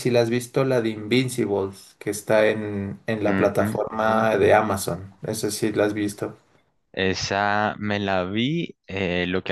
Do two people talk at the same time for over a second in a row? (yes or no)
no